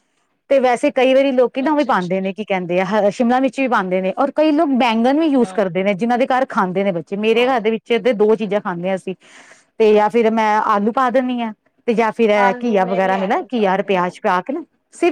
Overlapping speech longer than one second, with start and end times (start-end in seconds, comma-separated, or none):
12.4-14.2